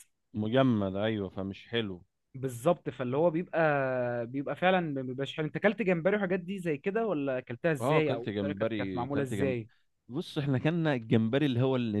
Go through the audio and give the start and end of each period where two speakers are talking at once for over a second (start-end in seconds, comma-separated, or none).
7.8-9.6